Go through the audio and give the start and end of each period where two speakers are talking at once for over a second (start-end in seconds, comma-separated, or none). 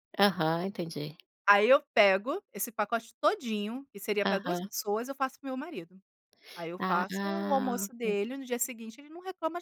6.8-8.2